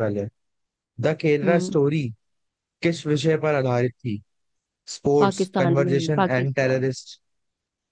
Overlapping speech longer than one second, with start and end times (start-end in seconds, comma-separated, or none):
5.2-6.9